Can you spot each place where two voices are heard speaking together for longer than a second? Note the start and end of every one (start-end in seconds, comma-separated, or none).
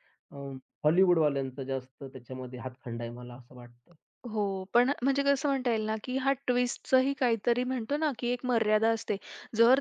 none